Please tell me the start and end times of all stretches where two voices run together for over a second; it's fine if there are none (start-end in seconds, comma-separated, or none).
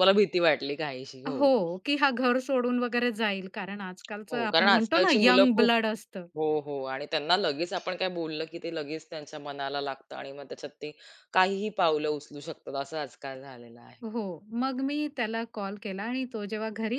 4.3-5.7